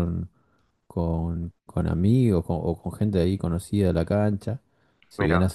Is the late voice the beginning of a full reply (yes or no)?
no